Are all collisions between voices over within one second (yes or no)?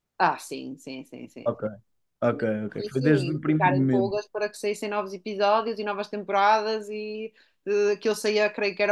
no